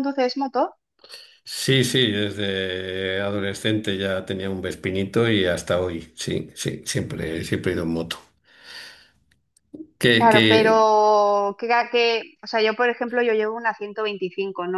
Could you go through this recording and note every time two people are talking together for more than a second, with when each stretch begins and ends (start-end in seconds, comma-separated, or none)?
none